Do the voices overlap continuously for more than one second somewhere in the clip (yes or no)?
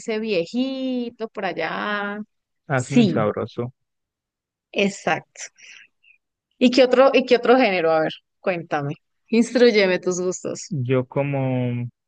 no